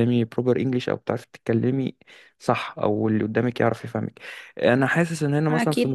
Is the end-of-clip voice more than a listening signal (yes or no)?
no